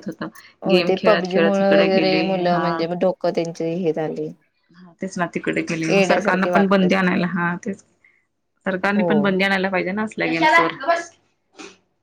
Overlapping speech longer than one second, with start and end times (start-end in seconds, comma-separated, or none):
none